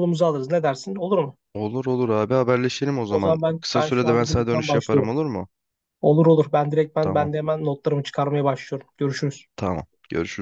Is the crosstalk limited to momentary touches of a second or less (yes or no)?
no